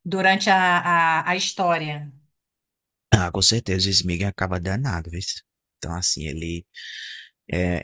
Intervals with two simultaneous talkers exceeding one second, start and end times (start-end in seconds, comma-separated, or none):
none